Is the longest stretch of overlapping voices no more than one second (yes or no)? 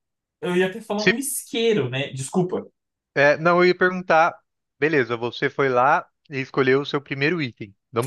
yes